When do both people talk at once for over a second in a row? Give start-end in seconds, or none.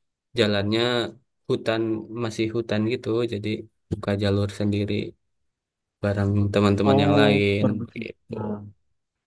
6.8-8.3